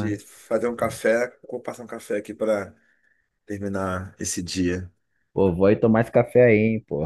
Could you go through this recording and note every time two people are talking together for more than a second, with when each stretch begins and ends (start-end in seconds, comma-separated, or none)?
none